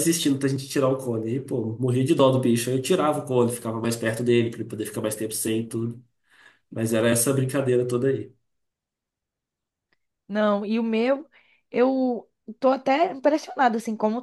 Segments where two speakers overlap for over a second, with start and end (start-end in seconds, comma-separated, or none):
none